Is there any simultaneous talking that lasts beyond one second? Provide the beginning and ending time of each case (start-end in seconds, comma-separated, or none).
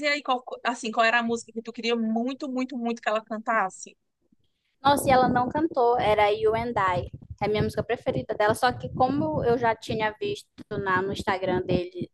none